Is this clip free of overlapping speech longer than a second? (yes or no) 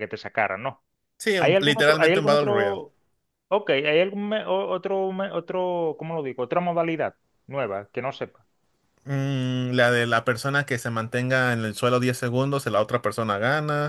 no